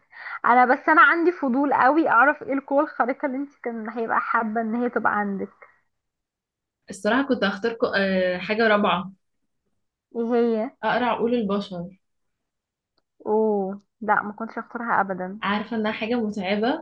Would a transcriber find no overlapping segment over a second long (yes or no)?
yes